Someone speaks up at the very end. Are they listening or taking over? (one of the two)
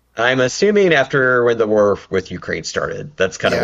taking over